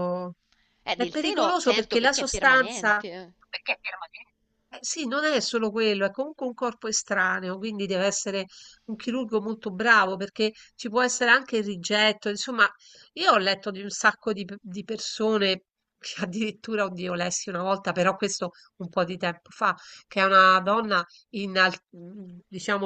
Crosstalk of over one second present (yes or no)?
yes